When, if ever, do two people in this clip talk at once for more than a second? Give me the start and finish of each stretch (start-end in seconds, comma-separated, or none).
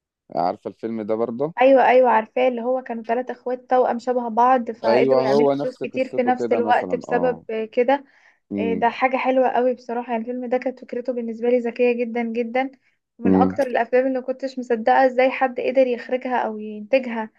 4.8-7.4